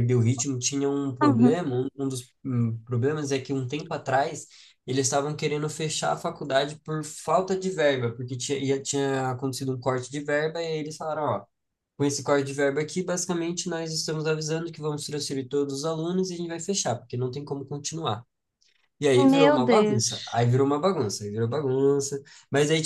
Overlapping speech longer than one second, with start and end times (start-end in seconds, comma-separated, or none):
19.2-20.4